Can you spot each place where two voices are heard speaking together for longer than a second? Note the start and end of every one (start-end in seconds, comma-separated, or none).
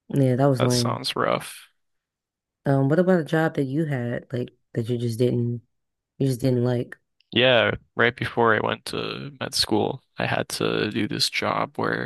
none